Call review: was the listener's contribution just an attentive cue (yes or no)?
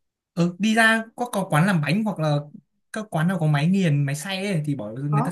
no